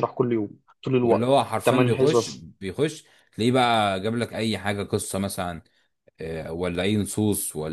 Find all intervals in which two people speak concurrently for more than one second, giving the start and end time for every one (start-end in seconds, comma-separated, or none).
1.0-2.5